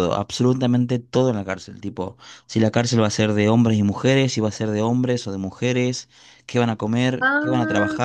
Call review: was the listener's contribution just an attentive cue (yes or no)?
yes